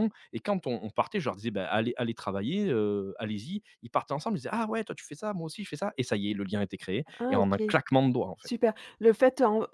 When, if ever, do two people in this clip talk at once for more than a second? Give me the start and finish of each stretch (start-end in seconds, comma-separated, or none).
none